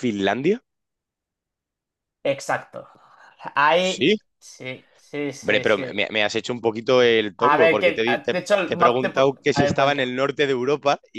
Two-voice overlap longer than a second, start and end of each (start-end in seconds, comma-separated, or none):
7.5-10.1